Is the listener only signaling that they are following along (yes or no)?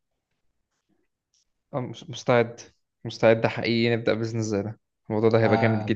no